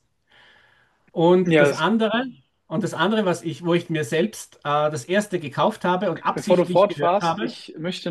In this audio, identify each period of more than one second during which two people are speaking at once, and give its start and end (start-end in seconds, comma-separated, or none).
6.3-7.6